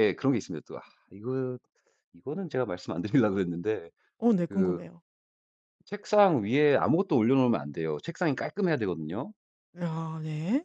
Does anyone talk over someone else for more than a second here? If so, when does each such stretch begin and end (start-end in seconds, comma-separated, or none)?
none